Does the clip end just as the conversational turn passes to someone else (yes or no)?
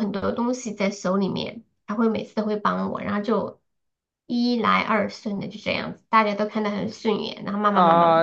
yes